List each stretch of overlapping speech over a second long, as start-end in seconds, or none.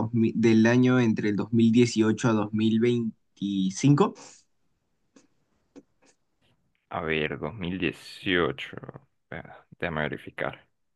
none